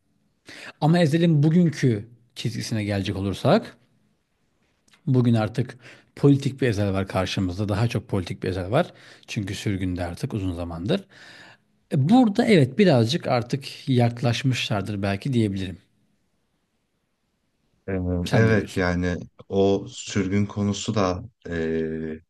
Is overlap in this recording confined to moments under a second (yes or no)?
yes